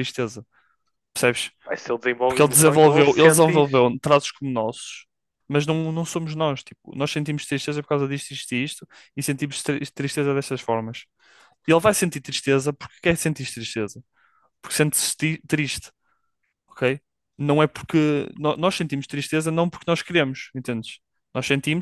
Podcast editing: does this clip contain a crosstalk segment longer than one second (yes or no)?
yes